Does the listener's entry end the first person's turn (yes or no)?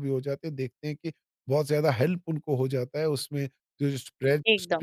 no